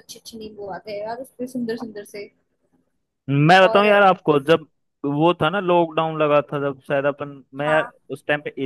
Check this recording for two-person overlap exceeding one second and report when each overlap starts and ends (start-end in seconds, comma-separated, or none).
none